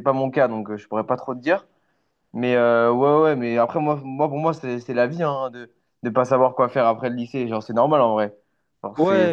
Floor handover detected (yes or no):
yes